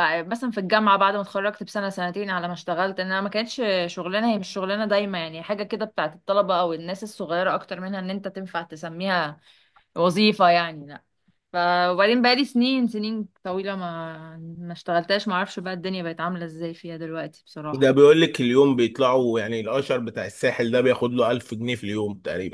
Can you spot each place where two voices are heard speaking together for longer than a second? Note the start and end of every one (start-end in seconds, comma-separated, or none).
none